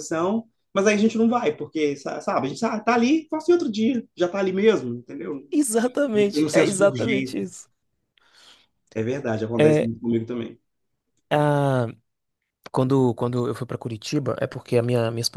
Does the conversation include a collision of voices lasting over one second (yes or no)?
yes